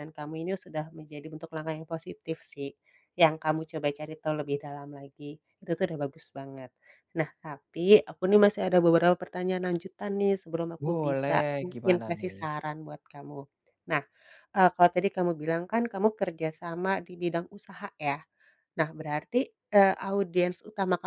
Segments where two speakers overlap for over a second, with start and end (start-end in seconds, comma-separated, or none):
10.8-12.4